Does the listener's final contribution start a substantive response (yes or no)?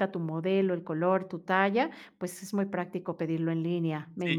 yes